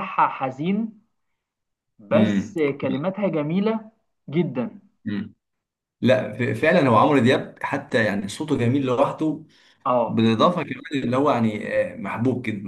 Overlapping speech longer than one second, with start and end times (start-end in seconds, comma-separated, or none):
none